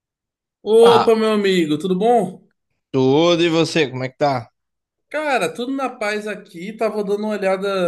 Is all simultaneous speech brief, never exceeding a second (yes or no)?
yes